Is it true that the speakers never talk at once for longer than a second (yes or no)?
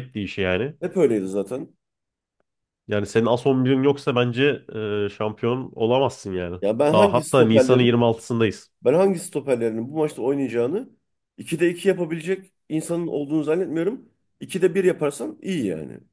no